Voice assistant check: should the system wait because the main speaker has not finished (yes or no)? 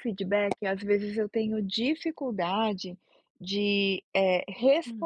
yes